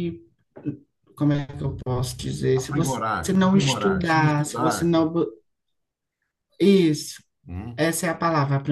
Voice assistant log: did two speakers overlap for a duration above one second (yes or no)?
yes